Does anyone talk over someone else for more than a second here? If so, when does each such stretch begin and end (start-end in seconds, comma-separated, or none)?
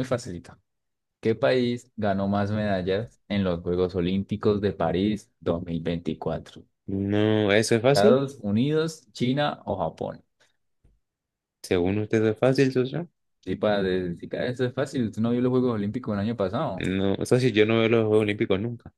none